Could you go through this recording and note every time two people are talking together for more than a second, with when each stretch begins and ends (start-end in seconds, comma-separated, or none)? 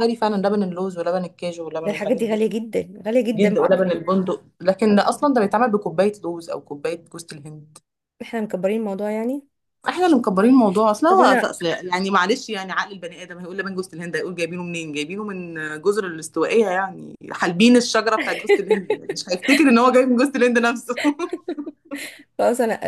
none